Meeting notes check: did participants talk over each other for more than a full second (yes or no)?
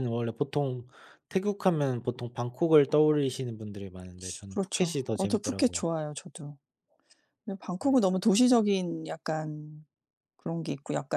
yes